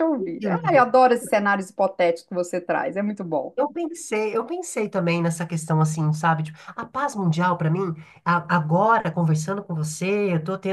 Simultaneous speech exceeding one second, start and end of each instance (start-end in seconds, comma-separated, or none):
none